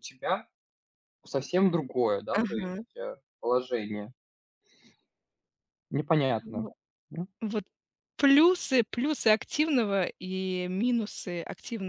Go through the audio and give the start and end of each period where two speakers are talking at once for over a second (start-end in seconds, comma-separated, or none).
none